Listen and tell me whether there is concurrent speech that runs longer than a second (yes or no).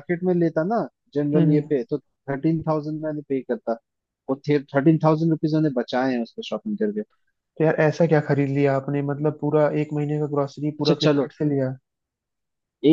no